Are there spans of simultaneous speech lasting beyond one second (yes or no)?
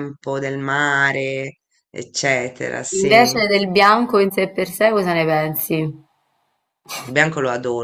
no